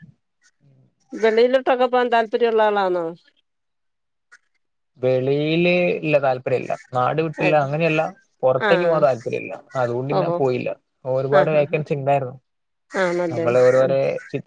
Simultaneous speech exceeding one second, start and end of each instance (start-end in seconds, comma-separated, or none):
none